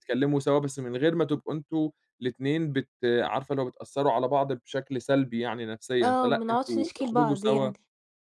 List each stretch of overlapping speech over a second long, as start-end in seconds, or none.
6.0-7.7